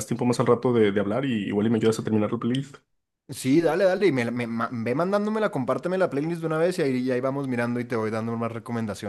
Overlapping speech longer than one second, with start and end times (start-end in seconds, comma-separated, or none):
none